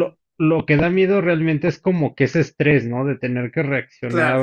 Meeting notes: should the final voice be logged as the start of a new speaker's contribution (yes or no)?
no